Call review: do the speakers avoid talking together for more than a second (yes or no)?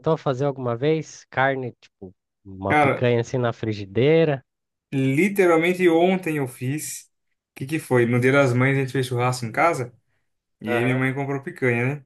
yes